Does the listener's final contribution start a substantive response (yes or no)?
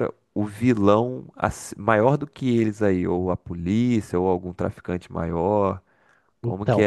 no